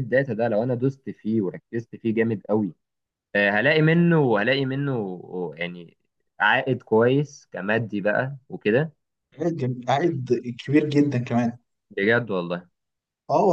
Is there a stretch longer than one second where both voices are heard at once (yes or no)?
no